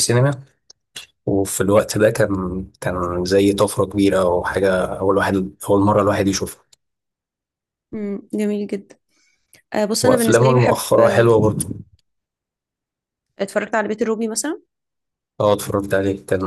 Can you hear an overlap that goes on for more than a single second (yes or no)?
yes